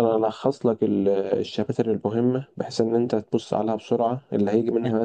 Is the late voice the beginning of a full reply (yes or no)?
no